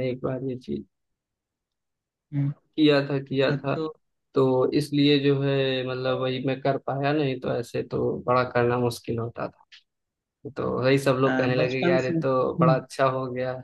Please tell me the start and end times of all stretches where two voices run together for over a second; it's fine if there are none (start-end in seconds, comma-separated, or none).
11.2-12.8